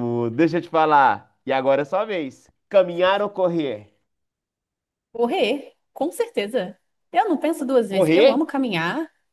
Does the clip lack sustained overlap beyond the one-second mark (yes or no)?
yes